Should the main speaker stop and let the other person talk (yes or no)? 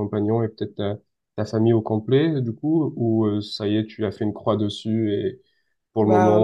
no